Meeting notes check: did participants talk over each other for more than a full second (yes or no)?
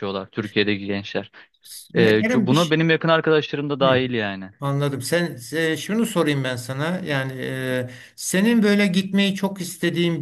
no